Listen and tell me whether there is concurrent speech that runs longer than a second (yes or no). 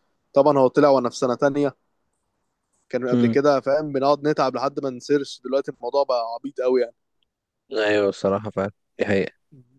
no